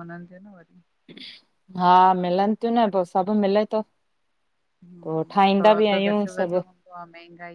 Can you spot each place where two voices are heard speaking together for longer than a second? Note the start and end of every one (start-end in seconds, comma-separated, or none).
5.0-6.6